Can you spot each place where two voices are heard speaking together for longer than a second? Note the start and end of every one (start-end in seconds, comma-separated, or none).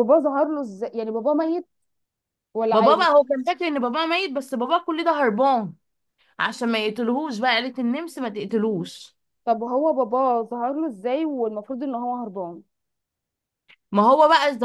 none